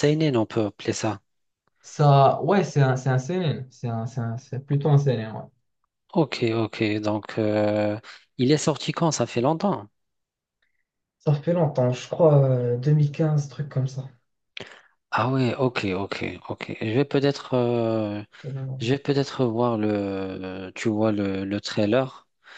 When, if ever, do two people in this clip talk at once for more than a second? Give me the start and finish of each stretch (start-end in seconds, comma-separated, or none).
none